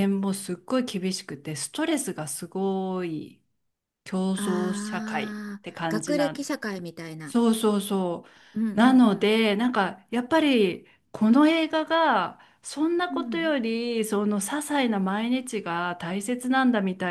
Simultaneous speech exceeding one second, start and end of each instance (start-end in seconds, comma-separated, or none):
4.9-6.5